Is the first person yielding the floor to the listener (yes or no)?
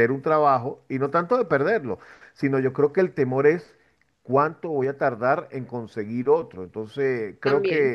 no